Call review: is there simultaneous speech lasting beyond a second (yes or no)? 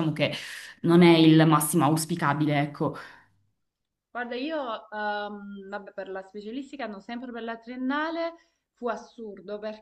no